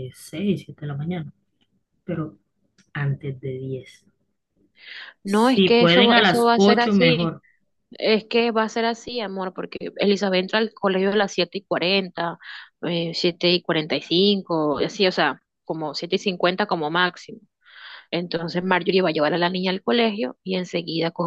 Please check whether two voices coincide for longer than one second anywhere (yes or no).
yes